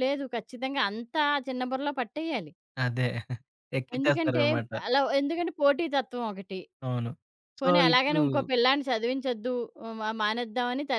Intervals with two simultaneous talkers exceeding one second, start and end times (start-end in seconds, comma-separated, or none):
none